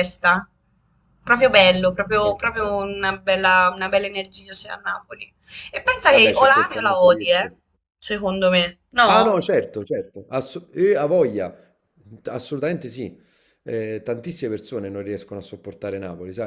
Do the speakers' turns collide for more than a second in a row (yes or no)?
yes